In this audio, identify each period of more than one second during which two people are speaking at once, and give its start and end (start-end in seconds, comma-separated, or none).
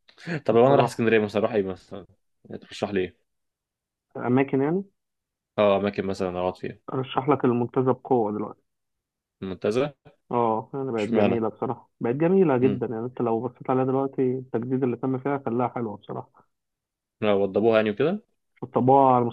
none